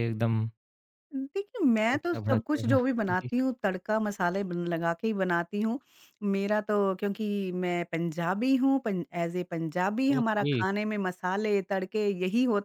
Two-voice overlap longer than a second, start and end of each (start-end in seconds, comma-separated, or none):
1.9-3.3